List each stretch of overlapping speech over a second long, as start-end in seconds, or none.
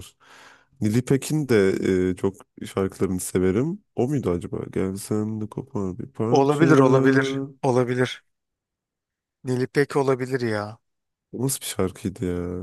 none